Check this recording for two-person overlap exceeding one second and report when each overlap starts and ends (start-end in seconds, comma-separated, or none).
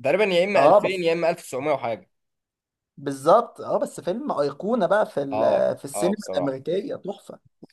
5.3-6.6